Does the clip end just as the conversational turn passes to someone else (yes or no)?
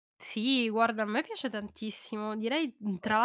no